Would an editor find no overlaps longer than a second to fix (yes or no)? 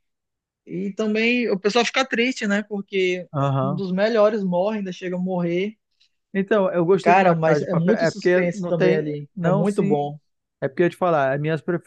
no